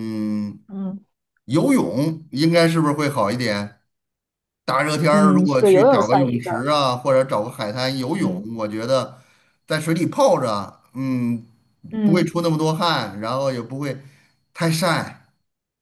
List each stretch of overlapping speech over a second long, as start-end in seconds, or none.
5.1-6.7